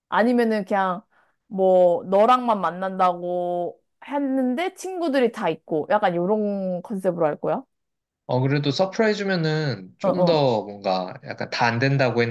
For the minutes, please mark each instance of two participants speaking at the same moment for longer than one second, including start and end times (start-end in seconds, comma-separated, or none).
none